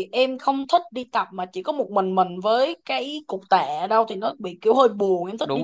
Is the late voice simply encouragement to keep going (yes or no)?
no